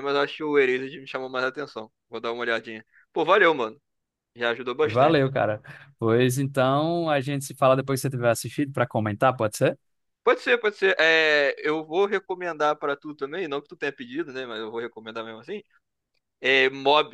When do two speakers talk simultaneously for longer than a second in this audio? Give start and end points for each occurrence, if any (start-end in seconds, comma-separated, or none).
none